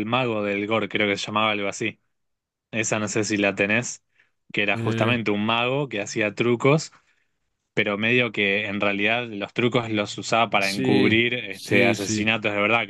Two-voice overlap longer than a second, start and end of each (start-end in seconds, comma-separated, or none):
10.6-12.3